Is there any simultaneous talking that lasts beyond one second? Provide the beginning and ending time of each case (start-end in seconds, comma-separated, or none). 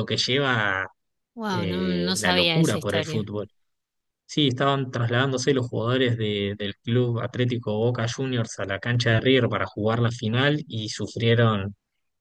1.5-3.3